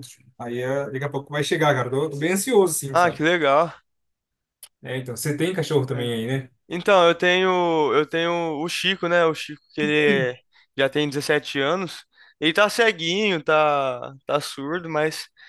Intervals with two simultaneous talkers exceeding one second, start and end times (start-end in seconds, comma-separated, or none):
none